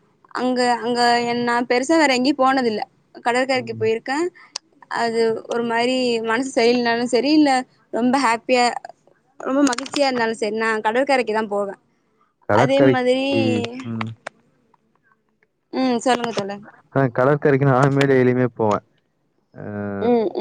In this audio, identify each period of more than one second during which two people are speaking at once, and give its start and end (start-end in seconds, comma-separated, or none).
none